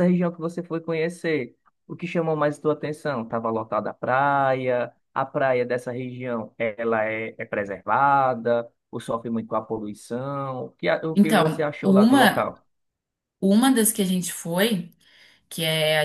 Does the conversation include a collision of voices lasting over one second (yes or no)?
yes